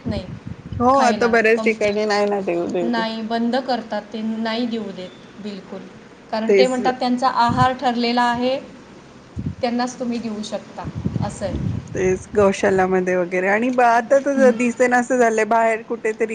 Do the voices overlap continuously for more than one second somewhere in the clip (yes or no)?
no